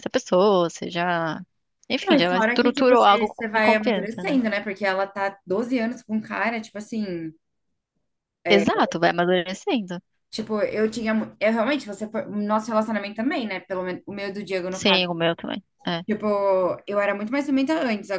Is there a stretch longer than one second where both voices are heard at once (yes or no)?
yes